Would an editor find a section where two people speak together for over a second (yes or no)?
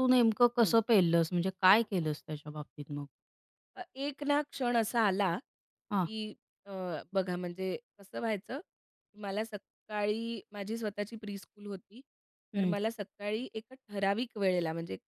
no